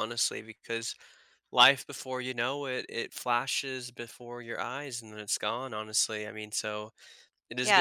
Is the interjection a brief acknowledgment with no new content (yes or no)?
no